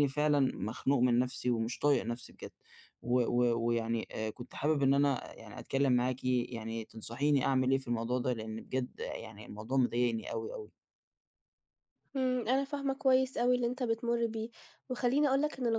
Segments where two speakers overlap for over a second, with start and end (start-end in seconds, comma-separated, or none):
none